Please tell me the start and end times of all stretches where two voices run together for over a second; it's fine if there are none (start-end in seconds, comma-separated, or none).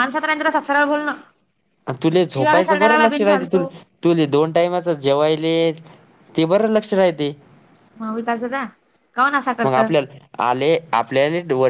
2.3-3.6